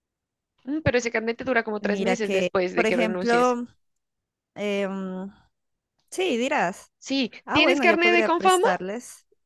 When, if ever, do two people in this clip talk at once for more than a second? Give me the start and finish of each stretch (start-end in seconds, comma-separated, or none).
1.8-3.6, 7.4-8.7